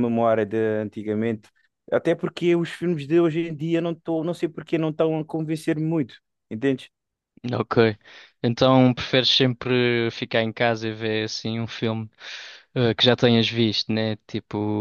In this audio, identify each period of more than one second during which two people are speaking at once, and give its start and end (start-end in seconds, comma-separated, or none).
none